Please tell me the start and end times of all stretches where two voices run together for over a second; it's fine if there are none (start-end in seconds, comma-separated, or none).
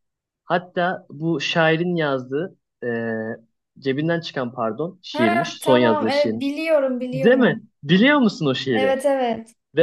5.1-6.5